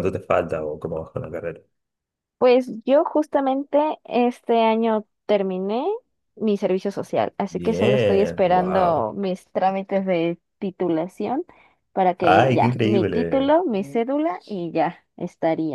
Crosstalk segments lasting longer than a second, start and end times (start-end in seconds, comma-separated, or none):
7.5-9.1, 12.2-13.6